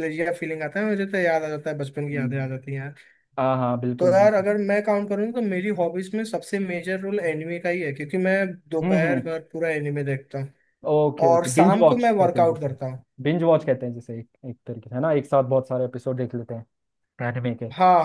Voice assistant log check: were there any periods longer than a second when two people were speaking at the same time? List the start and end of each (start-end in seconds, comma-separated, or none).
11.3-12.8